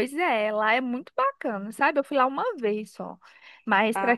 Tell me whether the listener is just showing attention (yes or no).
yes